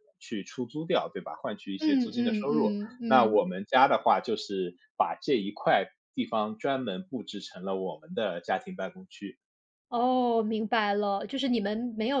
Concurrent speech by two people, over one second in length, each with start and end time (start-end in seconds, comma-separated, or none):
1.8-3.4